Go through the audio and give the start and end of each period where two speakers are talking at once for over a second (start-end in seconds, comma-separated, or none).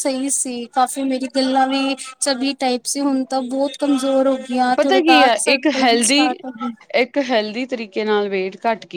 4.8-6.7